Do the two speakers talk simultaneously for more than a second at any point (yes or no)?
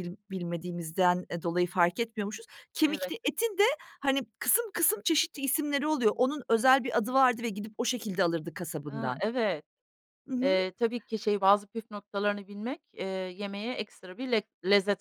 no